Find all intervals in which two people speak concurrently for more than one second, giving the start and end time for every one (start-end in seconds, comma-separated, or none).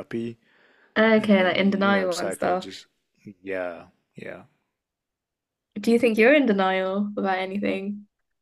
1.2-2.6